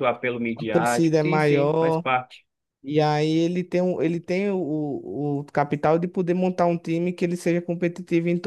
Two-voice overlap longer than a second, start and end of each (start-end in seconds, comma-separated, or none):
0.6-2.0